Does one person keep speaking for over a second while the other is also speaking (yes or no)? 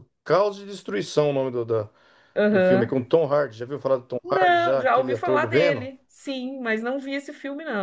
yes